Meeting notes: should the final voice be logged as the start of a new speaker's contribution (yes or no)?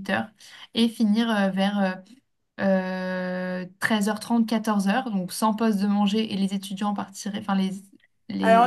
yes